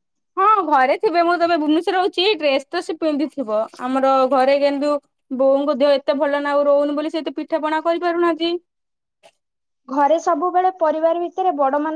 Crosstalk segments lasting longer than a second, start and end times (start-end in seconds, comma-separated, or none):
none